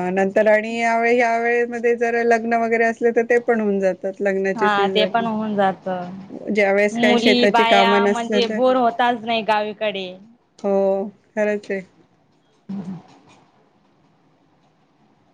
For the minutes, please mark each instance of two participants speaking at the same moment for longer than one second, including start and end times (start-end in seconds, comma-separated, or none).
6.9-8.6